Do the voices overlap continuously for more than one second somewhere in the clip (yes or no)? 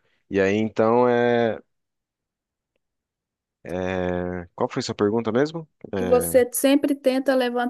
no